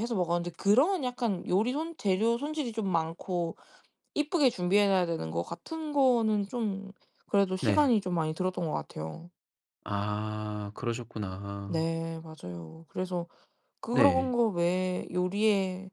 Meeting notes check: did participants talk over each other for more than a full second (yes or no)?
no